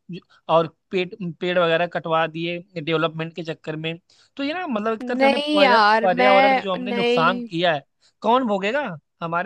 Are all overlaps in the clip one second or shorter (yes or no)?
no